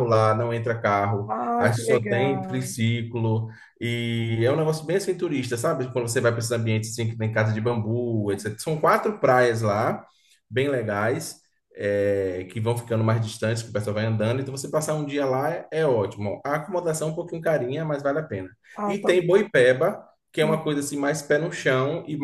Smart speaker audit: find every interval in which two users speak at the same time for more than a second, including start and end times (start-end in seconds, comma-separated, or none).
1.3-2.8